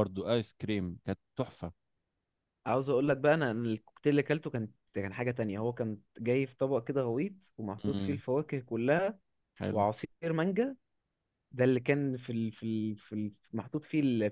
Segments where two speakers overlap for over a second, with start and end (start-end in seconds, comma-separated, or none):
none